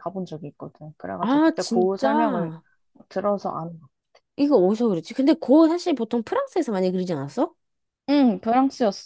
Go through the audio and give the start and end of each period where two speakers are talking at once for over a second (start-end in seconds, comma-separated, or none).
1.2-2.5